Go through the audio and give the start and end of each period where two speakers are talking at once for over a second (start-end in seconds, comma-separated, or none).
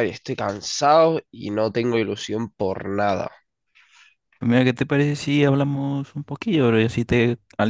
none